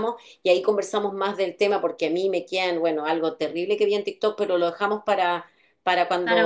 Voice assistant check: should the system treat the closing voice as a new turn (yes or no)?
no